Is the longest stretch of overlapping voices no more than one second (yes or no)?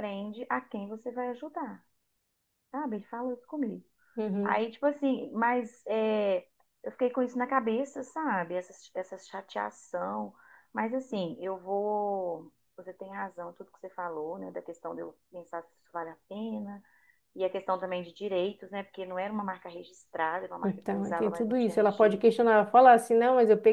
no